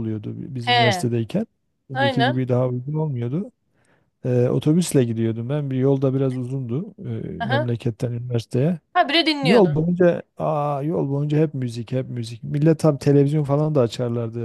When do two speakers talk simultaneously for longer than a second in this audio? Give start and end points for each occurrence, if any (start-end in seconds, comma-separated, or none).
none